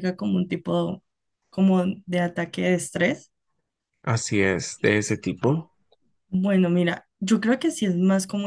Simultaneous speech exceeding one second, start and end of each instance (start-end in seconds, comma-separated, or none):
none